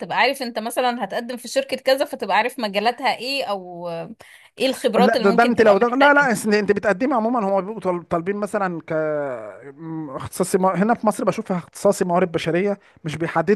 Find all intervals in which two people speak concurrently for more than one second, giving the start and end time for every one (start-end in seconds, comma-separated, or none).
5.0-6.3